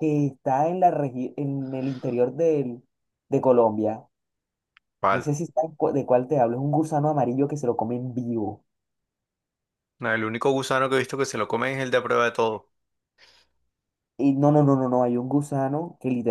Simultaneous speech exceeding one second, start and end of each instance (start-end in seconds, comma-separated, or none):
none